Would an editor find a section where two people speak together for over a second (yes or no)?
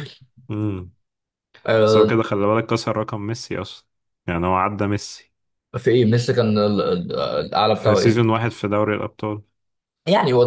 no